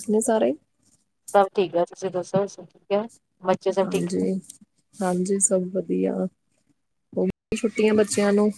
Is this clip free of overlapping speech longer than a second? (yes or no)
yes